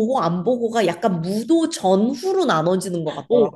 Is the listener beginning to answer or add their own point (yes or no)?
yes